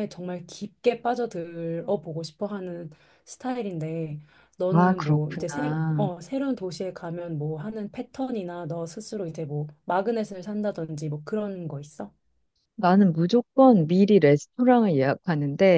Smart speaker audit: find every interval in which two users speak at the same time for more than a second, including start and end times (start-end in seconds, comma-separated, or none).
4.7-6.1